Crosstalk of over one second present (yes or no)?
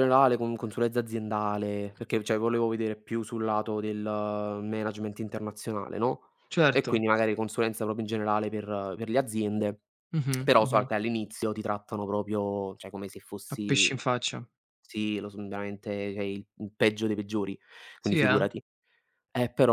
no